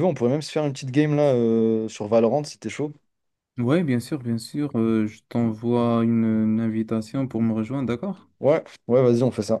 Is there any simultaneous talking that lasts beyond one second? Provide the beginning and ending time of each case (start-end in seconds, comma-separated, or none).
none